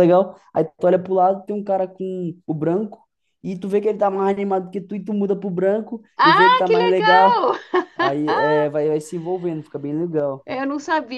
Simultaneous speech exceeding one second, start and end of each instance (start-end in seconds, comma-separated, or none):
6.2-7.4